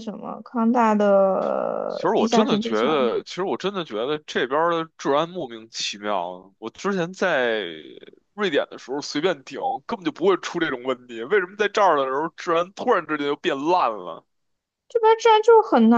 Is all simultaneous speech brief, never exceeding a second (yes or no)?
no